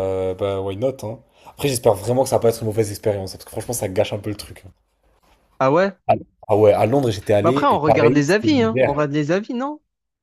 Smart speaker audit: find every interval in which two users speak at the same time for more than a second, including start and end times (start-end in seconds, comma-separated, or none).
7.4-9.0